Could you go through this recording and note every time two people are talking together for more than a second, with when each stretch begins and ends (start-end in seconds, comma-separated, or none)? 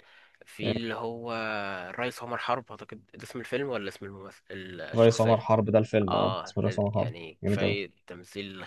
6.1-7.9